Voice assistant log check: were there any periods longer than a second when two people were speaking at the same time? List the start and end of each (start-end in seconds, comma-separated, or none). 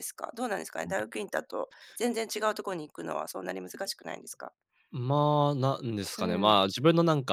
none